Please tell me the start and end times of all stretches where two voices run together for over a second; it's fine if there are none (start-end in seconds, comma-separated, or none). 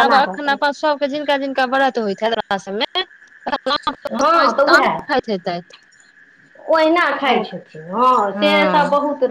none